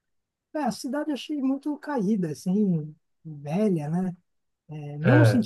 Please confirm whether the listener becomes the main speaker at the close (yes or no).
no